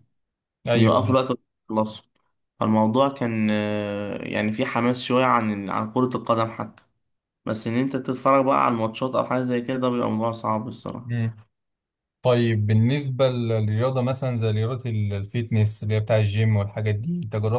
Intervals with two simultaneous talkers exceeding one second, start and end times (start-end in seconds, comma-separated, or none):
none